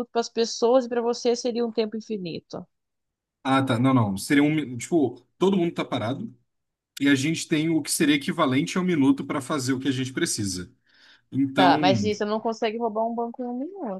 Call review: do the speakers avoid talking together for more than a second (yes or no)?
yes